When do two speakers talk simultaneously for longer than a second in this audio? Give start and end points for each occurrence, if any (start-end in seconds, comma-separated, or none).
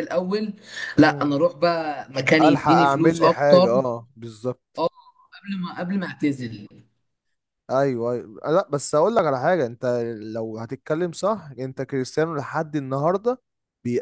2.5-3.7